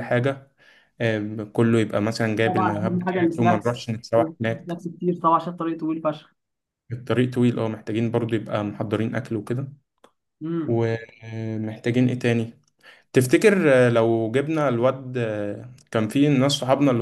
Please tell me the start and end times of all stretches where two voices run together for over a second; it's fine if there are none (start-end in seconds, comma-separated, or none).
2.4-4.8